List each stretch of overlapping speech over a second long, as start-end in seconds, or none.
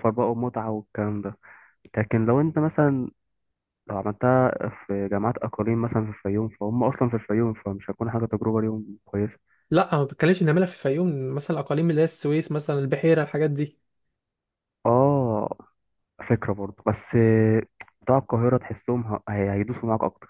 none